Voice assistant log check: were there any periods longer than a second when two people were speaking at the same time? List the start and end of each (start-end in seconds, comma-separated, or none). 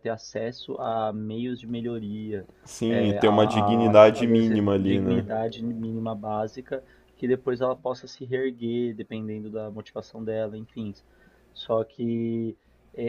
2.9-5.3